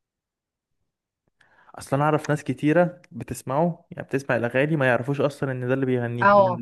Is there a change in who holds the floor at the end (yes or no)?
yes